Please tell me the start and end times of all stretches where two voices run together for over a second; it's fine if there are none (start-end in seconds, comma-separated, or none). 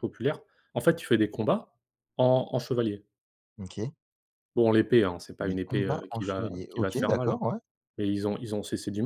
5.4-7.4